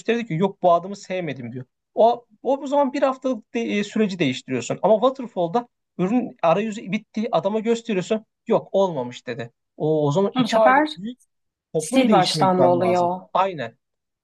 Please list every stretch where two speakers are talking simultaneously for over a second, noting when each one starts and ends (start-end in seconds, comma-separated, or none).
11.9-13.2